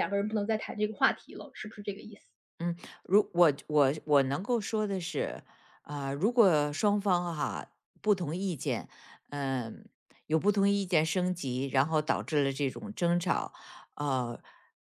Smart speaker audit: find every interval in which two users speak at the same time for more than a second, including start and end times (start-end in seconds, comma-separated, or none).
none